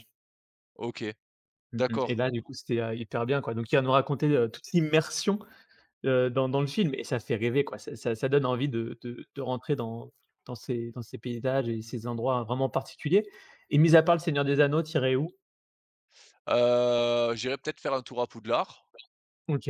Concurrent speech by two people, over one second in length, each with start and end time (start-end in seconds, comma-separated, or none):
none